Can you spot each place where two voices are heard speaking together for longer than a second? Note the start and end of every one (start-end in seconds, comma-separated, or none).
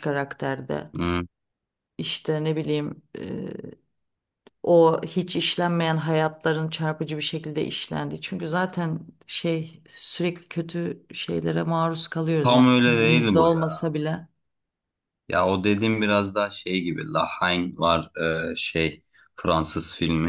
12.4-13.9